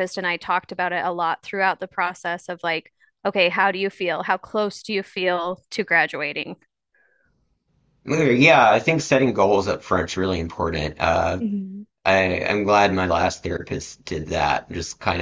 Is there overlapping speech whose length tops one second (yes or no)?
no